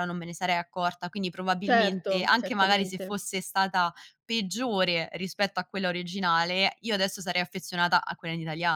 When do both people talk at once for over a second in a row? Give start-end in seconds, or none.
1.6-3.2